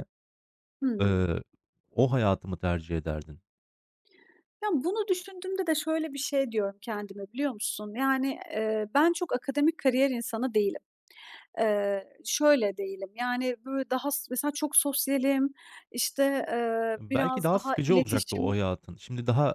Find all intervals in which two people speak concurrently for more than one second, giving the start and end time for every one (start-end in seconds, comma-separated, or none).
17.0-18.6